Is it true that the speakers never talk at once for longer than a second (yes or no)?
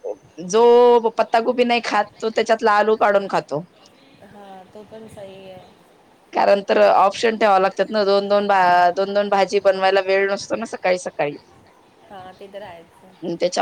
yes